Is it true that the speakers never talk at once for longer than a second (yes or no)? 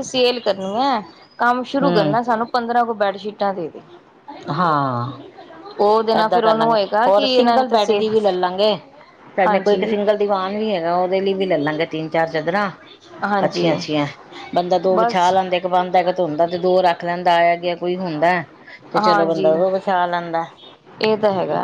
no